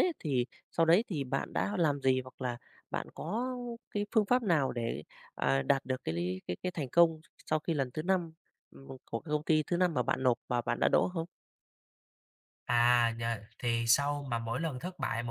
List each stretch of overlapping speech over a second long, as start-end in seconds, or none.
none